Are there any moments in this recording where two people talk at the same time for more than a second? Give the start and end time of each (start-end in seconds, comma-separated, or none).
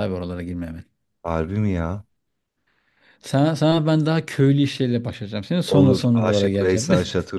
5.7-6.9